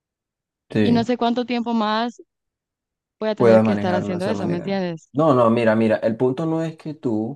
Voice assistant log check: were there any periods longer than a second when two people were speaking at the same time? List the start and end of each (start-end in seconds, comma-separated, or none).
3.4-5.1